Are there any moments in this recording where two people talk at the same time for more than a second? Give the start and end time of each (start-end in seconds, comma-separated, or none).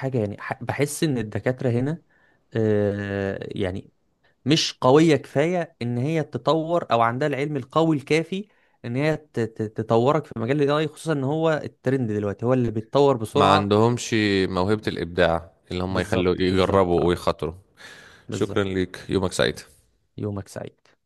15.9-17.2